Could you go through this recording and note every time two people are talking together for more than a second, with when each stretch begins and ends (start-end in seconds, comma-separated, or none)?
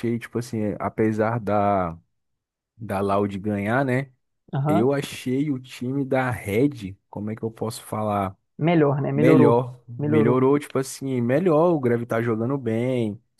9.1-10.5